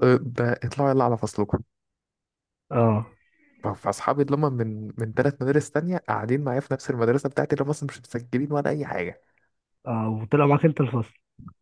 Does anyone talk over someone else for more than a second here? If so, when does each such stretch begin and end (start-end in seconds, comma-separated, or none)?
none